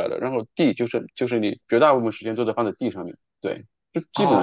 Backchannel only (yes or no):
no